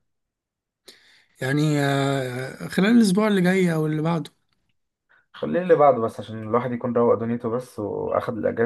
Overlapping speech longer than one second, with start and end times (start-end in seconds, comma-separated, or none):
none